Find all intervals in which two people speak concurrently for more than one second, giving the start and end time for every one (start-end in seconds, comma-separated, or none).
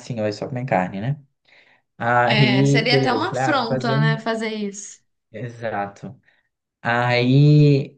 2.3-4.2